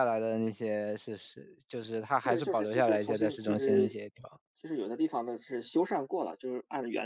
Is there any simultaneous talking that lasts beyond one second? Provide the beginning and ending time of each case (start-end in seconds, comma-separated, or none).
2.2-3.9